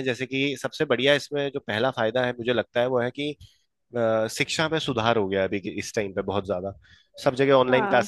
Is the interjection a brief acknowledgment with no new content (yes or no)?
yes